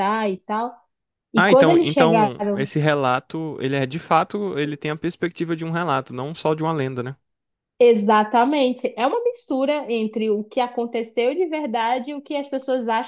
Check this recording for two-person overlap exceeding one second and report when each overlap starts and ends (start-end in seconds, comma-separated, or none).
1.3-2.7